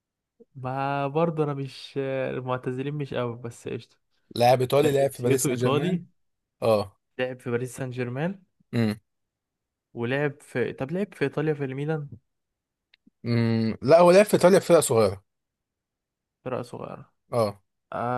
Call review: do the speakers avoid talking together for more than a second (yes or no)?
no